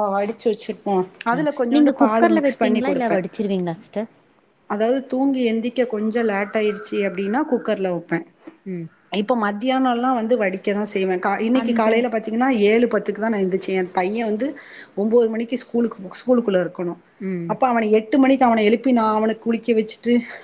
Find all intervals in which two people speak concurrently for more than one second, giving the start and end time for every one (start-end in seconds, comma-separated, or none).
1.4-3.2